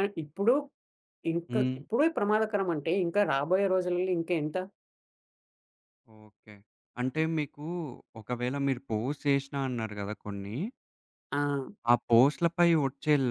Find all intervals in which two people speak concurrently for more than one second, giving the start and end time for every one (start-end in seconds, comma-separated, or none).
none